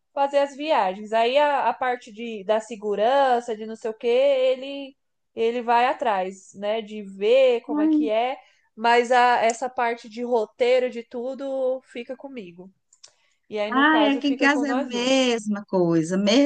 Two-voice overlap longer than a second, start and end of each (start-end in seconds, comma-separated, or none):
13.7-15.2